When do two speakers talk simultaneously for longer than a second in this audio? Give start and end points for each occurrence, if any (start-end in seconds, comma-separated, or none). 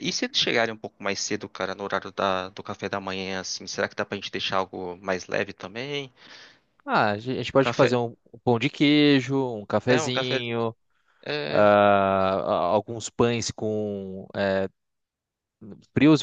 none